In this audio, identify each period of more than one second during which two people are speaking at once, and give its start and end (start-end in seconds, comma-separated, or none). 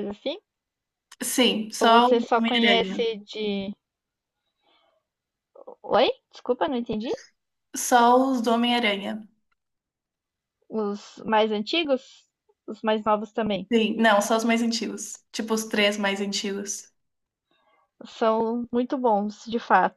1.8-3.0